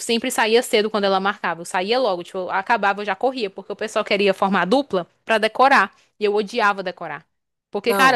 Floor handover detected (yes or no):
no